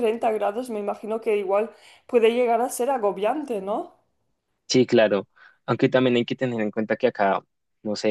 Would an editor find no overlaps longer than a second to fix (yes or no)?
yes